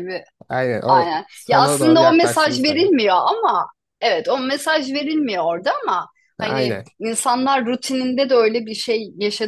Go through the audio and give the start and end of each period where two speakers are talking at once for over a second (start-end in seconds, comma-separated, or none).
0.9-2.9